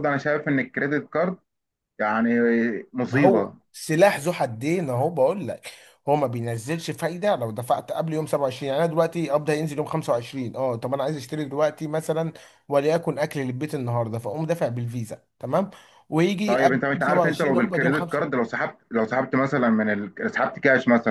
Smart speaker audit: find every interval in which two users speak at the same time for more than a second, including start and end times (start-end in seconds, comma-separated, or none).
16.5-18.3